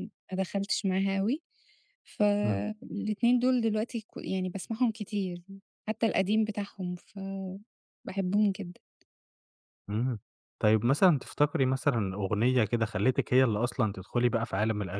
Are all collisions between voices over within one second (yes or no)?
yes